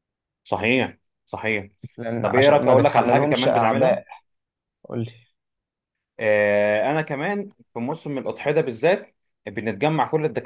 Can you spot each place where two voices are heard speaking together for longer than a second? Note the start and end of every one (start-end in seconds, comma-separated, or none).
2.2-4.0